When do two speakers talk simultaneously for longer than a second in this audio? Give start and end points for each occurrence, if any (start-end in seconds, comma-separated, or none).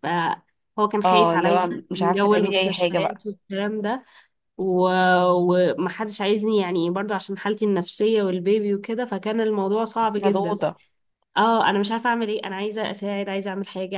1.1-3.2